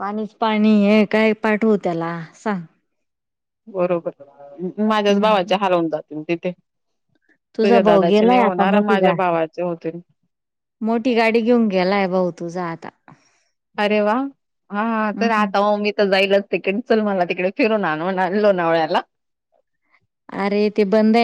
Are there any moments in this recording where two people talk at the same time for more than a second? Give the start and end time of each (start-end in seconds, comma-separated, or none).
7.6-9.1